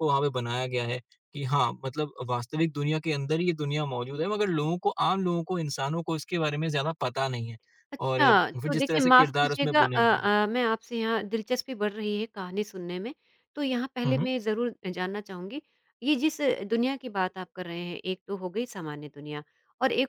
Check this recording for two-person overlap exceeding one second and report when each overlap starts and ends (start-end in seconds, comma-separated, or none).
8.1-10.3